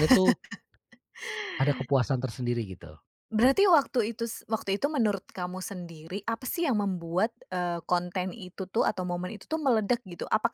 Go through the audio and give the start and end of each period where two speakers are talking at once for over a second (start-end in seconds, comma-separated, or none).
none